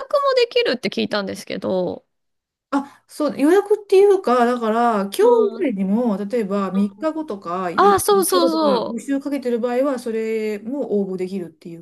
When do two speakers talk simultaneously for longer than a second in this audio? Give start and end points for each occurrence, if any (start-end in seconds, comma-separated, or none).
7.7-9.1